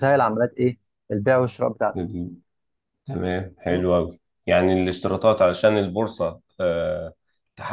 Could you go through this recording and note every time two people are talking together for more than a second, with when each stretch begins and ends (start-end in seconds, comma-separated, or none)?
none